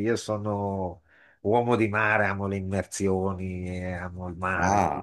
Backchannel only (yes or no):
yes